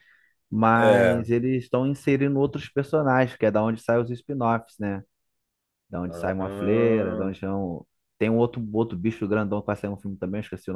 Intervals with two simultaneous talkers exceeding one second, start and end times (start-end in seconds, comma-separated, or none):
6.1-7.3